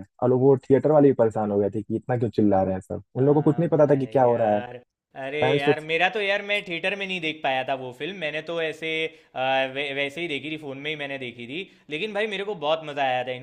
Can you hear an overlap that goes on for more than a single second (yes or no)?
yes